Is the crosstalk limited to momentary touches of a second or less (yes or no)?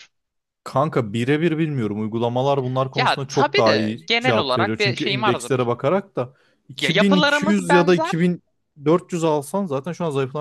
no